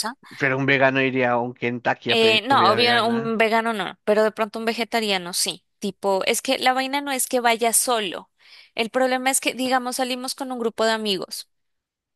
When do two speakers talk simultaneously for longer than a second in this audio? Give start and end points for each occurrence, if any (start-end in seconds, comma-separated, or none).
2.1-3.3